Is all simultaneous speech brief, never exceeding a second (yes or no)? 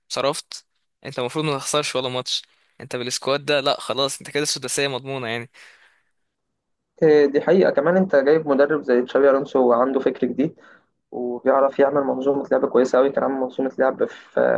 yes